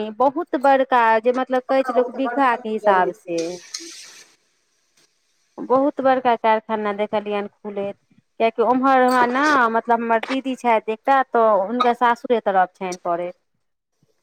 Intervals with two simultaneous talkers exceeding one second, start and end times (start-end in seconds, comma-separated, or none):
1.6-3.4